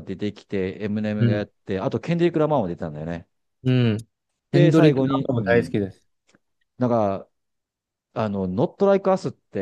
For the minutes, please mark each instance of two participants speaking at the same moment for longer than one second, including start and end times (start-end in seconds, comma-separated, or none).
4.5-5.7